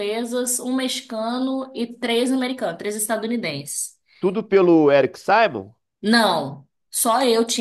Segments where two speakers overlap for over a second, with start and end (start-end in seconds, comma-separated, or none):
none